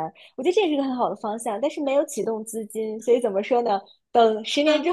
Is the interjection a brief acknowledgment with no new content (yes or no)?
yes